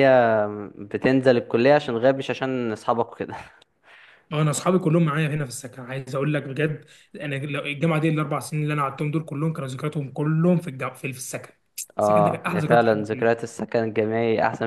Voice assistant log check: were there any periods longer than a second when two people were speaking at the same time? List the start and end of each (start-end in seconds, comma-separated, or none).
12.0-13.3